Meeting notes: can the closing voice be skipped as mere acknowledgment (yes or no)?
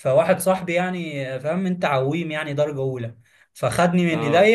yes